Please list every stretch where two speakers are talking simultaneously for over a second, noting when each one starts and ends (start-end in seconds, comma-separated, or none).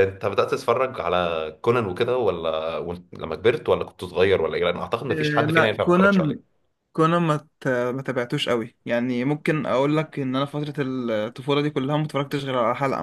5.1-6.4